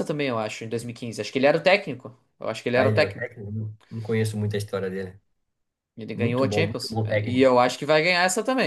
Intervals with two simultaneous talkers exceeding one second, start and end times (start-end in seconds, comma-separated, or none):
6.1-7.5